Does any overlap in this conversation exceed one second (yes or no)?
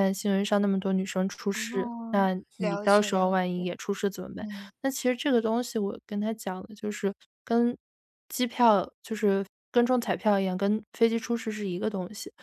yes